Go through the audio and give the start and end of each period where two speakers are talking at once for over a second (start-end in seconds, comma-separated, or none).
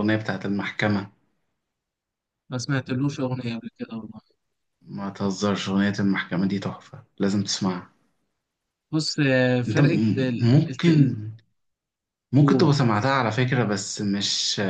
9.7-11.1